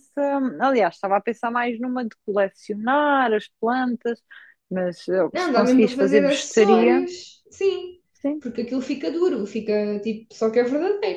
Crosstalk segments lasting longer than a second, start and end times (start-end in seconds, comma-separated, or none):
5.3-7.0